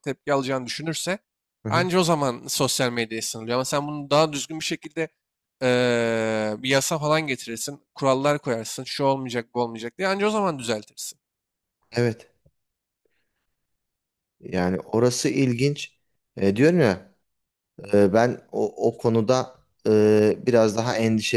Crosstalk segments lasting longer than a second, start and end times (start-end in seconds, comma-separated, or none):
none